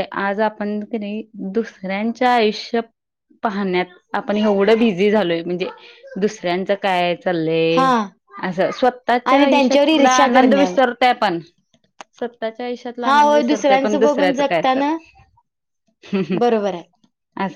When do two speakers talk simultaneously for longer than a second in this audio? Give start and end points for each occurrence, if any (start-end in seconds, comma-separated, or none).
9.3-10.8, 13.0-15.0